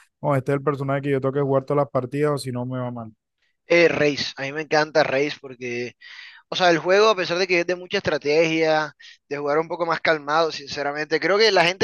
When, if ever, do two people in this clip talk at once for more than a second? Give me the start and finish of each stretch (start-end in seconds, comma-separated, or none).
none